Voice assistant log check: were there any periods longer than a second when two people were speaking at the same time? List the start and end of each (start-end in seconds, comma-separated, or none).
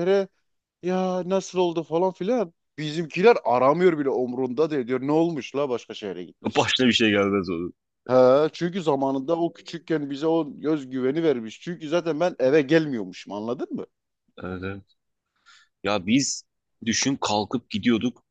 none